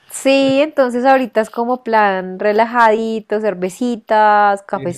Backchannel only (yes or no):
yes